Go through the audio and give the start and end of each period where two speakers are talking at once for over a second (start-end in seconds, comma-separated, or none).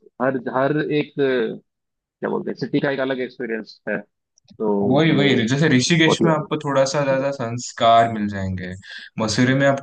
none